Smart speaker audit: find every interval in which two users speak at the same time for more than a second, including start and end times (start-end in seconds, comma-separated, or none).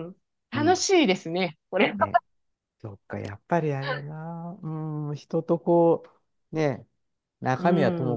none